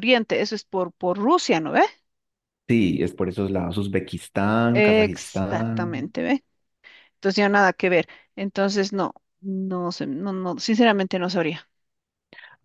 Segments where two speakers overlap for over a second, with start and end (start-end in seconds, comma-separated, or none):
4.7-6.0